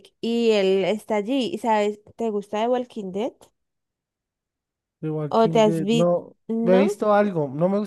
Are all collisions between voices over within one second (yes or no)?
no